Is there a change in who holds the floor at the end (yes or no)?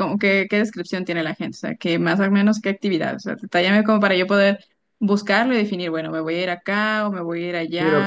yes